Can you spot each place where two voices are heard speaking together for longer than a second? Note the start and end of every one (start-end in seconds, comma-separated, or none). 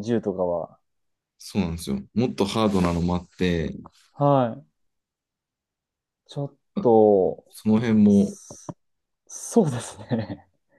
none